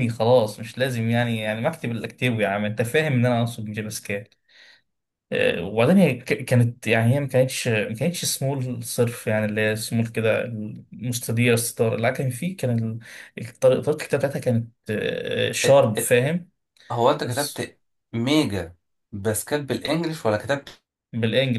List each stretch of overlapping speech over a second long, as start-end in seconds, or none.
none